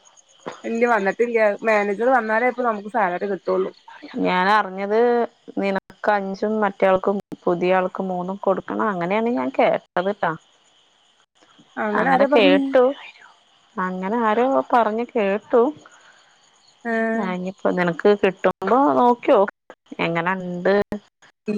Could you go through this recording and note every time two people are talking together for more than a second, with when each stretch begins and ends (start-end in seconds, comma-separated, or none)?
none